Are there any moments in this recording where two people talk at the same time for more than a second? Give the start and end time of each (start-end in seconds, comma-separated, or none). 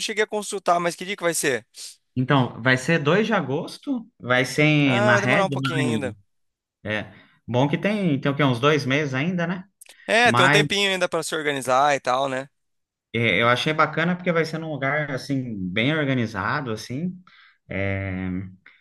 4.8-6.1